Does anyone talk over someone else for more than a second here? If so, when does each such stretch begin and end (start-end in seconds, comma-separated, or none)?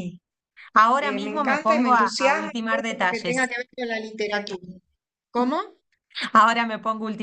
1.0-3.5